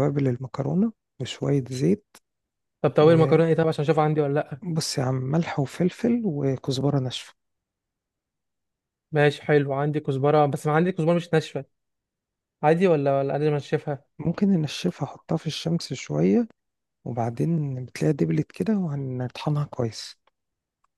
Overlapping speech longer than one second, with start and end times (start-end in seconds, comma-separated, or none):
none